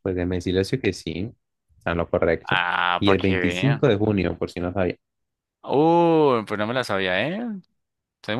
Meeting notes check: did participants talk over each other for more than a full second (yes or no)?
yes